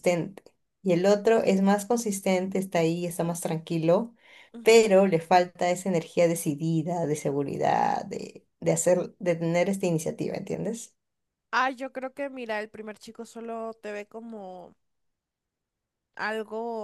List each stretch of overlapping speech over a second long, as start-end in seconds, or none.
none